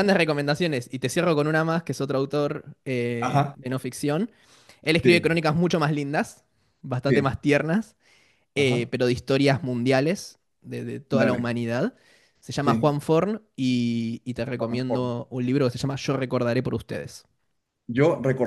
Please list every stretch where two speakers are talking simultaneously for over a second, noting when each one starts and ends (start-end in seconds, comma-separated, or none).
none